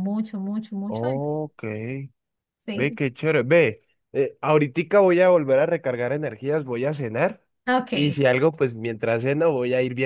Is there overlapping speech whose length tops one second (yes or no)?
no